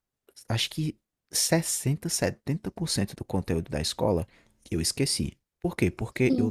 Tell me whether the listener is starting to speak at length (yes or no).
no